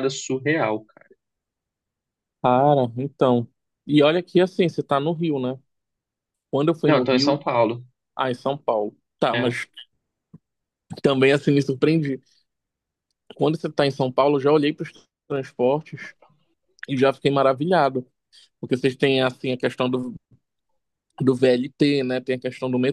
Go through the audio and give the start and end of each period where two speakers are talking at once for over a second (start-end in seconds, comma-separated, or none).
none